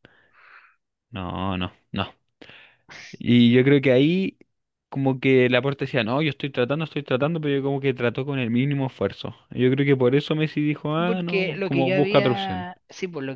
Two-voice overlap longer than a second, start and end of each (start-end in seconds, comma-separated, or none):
10.9-12.7